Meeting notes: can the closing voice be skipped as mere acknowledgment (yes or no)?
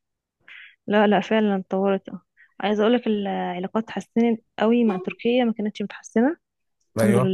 yes